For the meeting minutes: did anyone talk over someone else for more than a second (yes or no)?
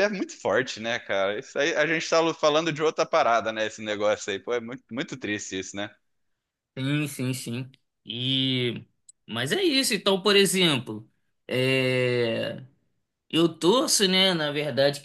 no